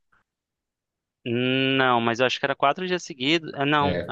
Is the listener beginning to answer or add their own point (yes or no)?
no